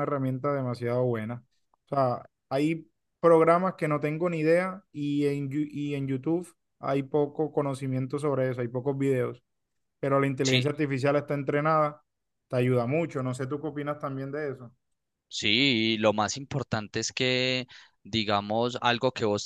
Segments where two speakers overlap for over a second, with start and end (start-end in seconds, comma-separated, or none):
none